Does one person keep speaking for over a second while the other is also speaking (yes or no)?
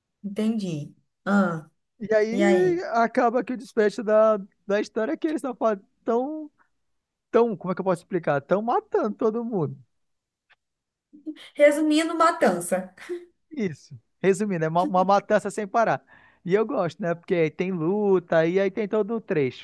no